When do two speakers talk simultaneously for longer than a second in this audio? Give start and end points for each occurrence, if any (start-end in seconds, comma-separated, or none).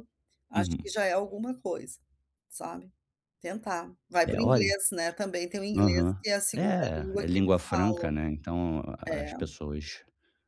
5.8-8.1